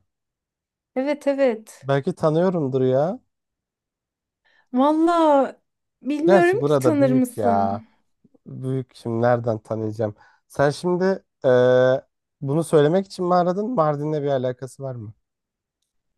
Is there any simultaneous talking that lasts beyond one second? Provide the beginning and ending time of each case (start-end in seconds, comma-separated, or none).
6.2-7.8